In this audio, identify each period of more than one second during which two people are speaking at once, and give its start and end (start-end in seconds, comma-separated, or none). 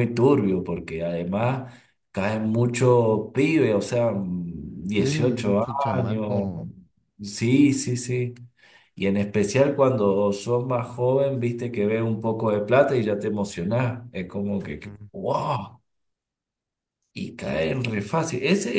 5.0-6.5